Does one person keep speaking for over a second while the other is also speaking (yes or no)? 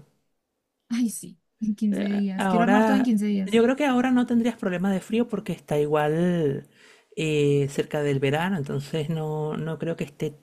yes